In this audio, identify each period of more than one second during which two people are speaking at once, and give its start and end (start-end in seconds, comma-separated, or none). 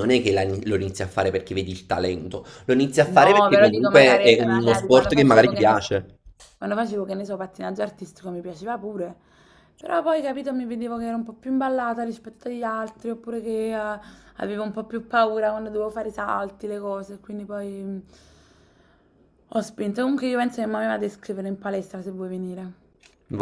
3.0-5.9